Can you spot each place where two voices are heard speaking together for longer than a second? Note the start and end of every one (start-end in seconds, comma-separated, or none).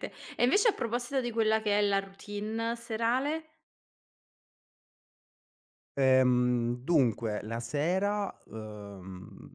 none